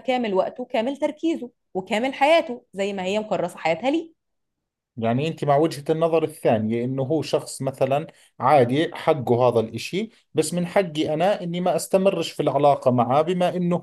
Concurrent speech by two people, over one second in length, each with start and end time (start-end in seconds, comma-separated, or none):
none